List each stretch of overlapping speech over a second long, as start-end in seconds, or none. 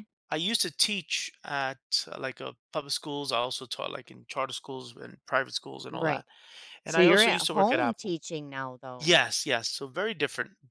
6.9-8.2